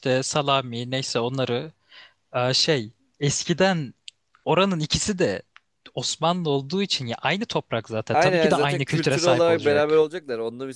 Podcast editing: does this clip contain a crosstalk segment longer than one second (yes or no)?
yes